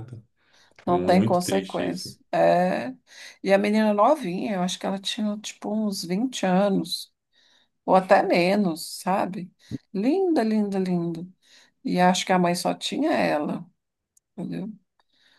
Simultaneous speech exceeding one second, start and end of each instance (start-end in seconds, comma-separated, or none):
0.9-2.2